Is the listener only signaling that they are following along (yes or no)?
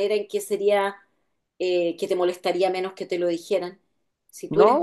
no